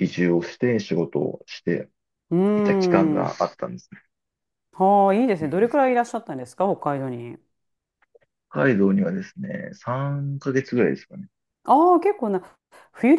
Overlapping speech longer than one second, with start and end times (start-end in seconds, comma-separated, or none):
none